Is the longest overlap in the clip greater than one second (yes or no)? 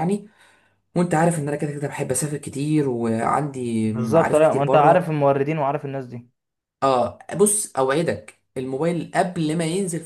yes